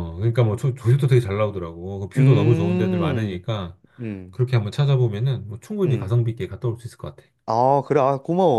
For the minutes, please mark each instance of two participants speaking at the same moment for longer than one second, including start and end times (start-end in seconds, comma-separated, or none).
2.2-3.4